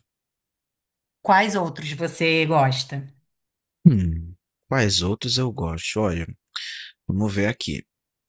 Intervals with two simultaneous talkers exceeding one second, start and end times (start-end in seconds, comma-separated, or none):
none